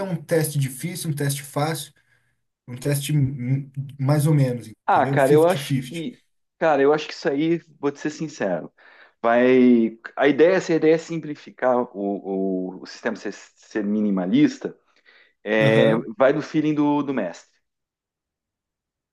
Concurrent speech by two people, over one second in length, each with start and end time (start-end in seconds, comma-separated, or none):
4.8-6.0